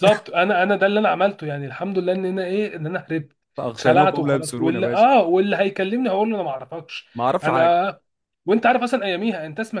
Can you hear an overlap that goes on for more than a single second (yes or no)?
yes